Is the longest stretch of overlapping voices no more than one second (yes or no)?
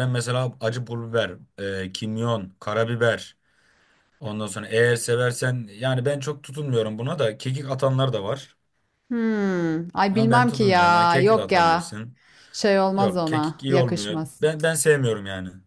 no